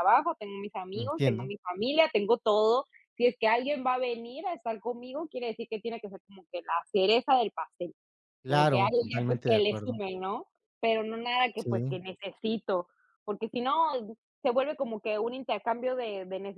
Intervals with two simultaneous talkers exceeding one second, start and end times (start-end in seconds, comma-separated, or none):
8.5-10.0